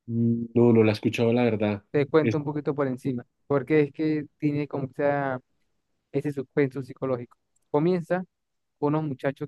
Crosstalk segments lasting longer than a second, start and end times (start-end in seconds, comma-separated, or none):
none